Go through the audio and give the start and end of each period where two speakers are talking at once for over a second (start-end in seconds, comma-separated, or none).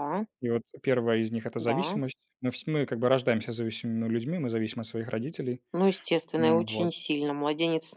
none